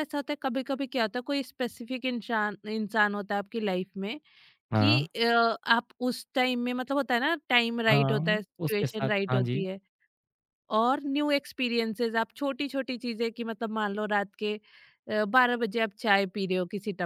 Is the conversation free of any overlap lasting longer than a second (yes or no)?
no